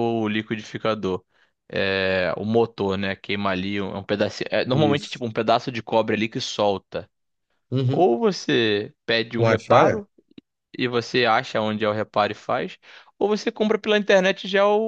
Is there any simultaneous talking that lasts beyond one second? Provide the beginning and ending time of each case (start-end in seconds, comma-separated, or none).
none